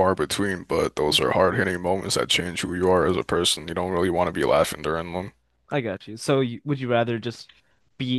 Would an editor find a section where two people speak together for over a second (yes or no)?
no